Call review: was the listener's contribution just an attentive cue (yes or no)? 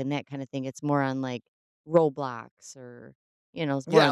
no